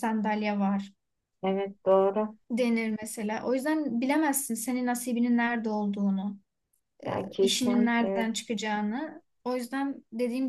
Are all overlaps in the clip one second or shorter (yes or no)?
no